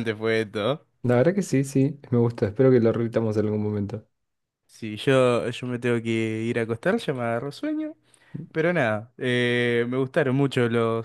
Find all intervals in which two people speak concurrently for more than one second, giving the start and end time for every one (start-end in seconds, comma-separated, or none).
none